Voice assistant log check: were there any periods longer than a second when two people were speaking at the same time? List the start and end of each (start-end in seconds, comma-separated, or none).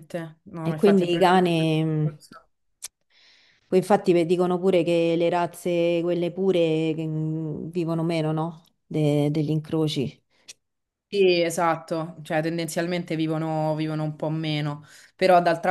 0.6-2.2